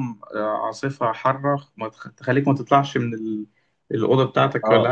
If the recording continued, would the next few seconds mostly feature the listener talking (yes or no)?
yes